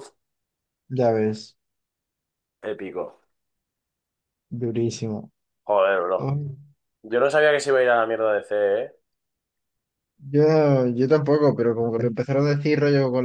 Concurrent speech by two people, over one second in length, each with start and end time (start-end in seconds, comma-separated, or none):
none